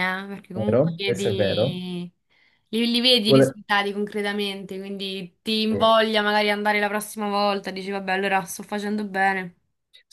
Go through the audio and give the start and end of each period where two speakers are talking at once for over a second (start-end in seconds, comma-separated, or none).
0.5-1.8